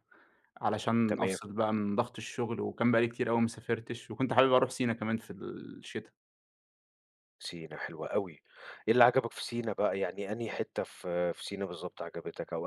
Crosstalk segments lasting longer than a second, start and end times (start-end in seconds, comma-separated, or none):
none